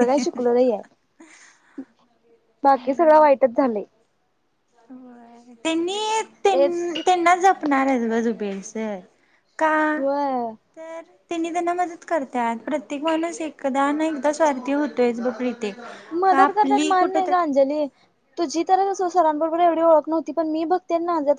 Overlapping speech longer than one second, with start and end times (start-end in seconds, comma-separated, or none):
none